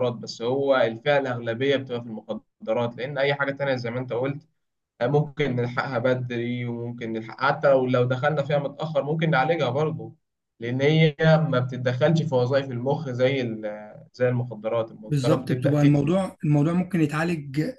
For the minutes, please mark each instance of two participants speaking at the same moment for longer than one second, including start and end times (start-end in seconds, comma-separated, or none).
15.1-16.3